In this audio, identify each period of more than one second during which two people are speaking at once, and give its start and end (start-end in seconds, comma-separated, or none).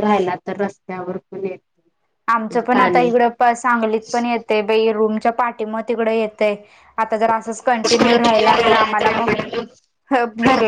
none